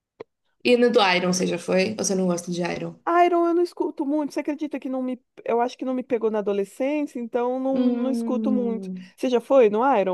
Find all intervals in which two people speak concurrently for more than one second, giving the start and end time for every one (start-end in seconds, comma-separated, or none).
7.7-9.1